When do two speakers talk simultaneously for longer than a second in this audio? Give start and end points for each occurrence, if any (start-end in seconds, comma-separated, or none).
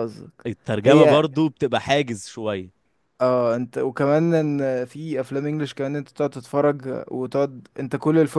none